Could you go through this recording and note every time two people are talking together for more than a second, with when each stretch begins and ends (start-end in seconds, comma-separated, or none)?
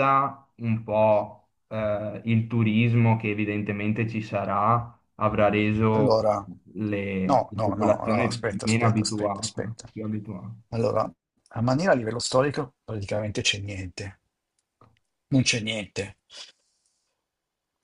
7.2-9.9